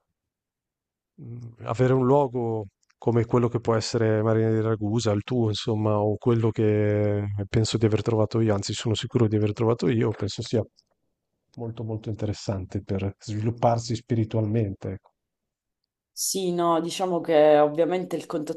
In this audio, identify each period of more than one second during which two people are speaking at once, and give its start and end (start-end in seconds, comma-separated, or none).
none